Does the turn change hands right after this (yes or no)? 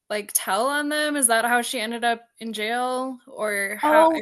yes